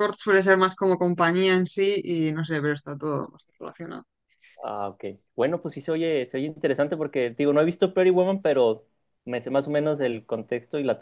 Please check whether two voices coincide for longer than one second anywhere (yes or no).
no